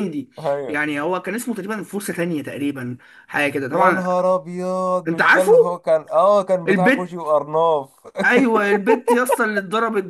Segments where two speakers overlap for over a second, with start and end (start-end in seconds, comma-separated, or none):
none